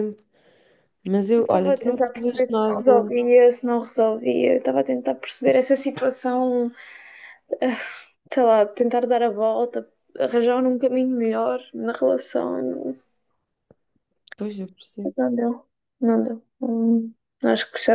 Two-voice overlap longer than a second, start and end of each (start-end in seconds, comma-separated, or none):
1.4-3.1